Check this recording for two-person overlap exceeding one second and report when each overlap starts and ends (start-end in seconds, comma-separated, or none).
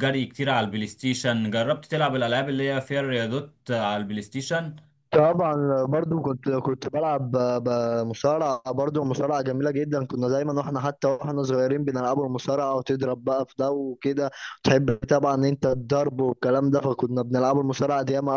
none